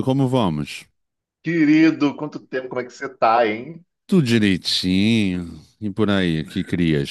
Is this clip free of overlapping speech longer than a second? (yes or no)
yes